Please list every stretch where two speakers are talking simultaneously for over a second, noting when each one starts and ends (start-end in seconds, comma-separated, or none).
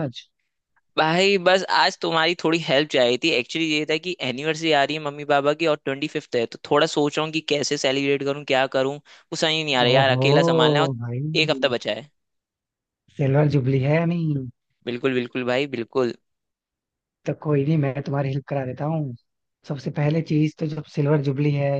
none